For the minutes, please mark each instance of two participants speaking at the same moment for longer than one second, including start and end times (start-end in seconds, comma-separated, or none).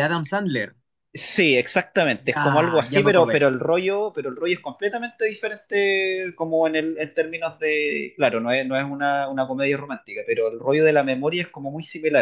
2.2-3.4